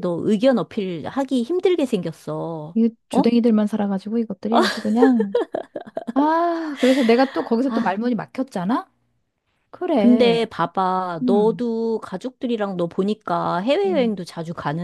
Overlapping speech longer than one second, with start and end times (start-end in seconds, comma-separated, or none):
none